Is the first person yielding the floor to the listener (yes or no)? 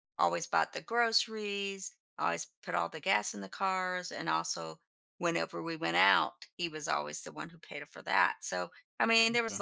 no